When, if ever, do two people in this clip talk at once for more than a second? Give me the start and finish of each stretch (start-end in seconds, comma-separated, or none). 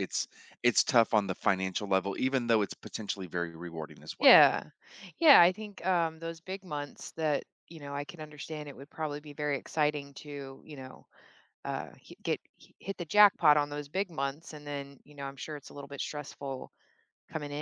none